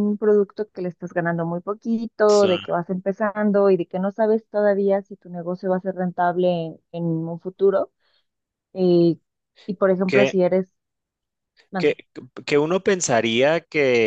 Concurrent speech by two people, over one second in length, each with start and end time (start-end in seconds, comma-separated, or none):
none